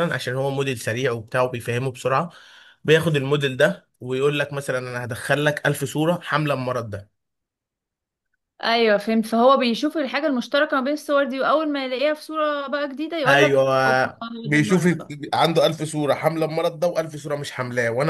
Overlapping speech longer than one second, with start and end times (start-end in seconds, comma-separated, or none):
13.3-14.9